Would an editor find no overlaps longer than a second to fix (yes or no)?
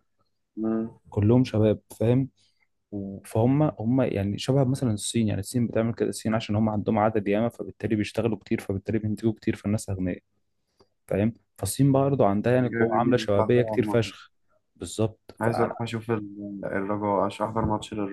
no